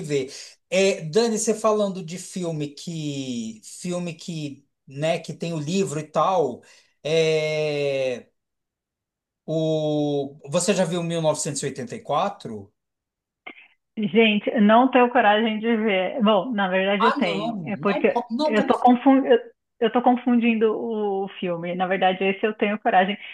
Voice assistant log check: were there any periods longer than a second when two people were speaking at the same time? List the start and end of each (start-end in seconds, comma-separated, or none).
17.0-19.0